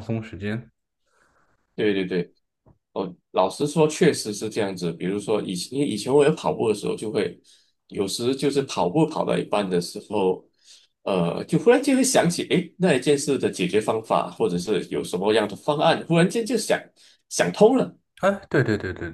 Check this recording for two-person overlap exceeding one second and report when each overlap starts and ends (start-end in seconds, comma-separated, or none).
none